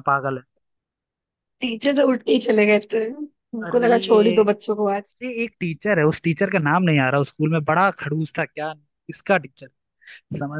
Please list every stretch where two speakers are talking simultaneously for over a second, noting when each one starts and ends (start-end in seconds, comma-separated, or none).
none